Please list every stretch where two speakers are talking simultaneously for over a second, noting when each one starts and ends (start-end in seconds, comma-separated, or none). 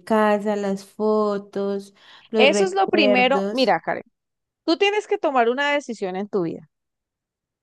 2.4-3.7